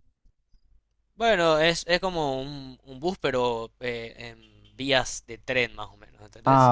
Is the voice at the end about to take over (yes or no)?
yes